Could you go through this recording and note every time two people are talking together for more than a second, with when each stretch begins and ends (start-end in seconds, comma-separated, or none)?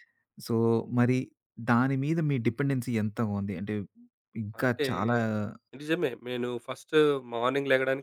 none